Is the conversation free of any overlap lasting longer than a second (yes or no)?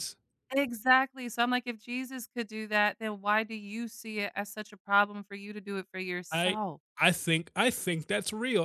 yes